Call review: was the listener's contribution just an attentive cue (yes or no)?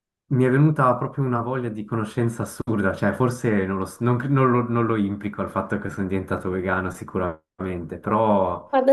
no